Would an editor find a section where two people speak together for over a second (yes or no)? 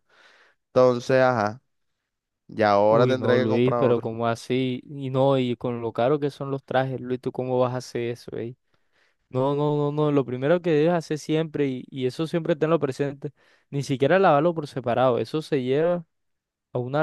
yes